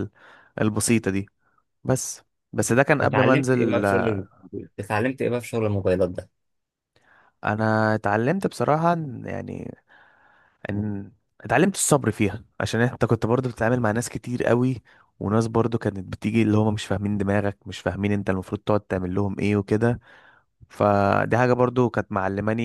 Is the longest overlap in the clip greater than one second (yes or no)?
yes